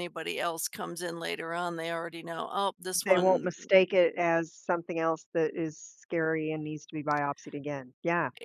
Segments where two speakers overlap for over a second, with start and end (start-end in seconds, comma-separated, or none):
none